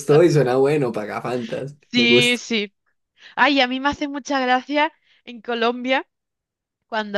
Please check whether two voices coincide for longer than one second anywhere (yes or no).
no